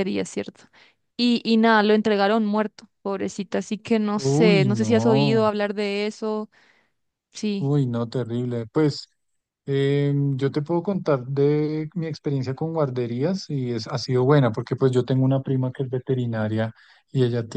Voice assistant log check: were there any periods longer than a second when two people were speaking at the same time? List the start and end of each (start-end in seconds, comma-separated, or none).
4.2-5.5